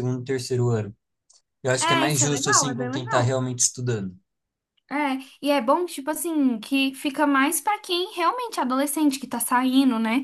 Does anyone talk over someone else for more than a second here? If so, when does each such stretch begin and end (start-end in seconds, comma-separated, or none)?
1.8-3.4